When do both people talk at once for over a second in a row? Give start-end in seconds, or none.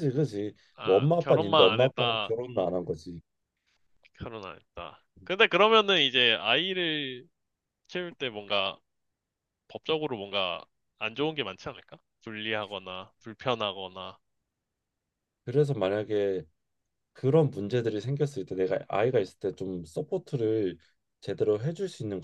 0.8-2.3